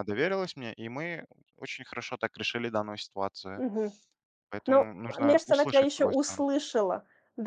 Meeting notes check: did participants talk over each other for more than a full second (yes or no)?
yes